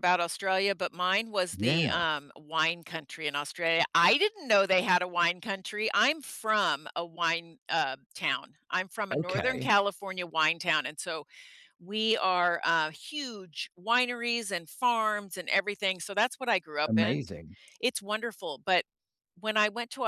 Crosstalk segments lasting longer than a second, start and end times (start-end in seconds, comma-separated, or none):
none